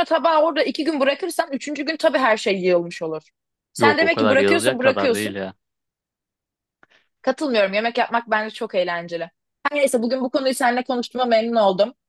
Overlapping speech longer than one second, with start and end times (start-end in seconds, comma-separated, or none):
3.8-5.3